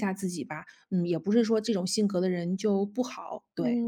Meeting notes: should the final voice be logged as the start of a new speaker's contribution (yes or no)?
yes